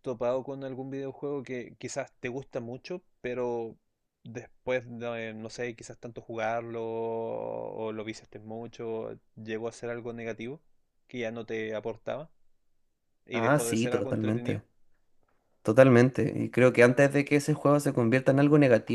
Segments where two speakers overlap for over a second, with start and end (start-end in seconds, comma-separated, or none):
13.3-14.6